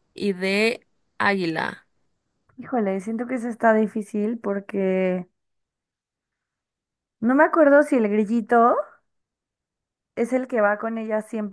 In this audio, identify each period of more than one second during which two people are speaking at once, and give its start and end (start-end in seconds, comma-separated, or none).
none